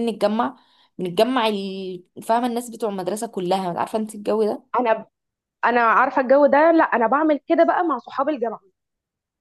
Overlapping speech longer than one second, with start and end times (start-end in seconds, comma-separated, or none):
none